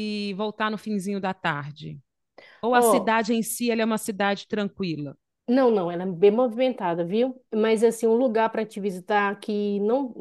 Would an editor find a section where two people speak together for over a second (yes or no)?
no